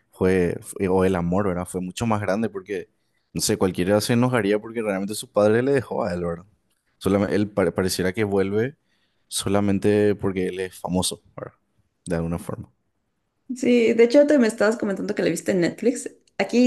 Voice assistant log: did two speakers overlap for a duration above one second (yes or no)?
no